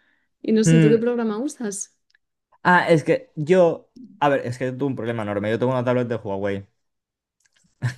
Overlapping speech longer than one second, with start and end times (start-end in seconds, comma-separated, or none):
none